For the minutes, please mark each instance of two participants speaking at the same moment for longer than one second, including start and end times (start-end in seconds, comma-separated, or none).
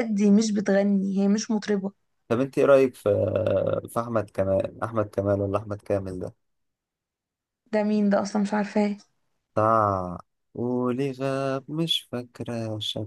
none